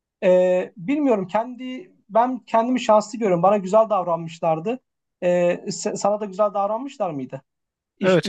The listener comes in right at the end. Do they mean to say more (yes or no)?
yes